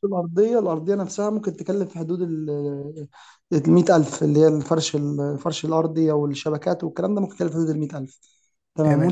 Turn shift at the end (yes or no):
no